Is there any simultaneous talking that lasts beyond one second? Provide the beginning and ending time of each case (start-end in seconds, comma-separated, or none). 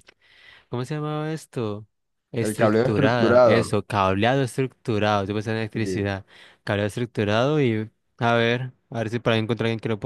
2.4-3.8